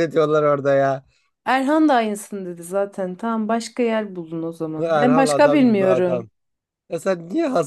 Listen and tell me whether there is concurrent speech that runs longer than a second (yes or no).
yes